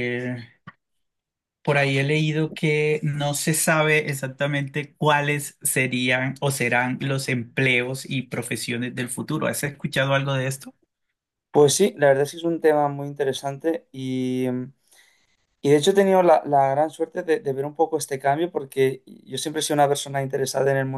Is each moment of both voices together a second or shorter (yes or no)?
yes